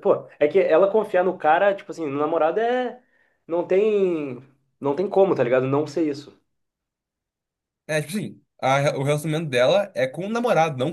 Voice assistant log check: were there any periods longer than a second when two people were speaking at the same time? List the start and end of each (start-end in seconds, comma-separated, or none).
none